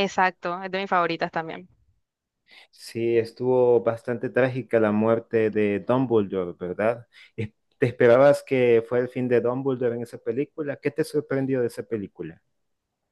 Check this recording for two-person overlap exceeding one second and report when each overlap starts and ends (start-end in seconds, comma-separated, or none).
none